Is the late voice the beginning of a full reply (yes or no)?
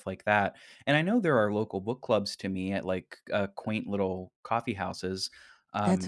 yes